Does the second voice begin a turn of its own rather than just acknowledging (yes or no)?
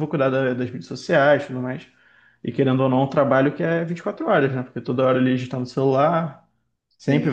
no